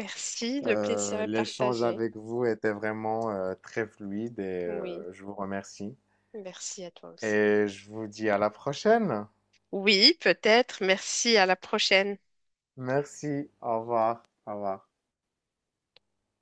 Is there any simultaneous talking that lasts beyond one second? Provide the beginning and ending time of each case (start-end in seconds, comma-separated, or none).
0.6-2.0